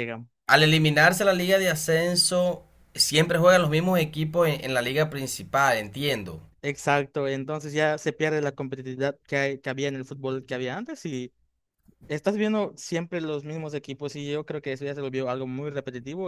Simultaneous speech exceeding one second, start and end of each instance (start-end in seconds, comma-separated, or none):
none